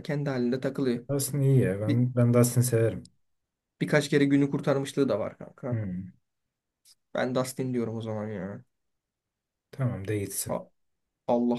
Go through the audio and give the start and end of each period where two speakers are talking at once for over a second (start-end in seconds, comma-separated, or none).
none